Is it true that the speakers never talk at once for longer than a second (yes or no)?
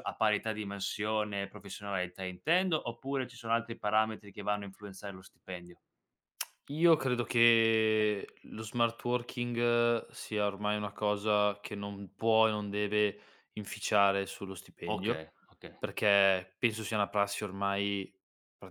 yes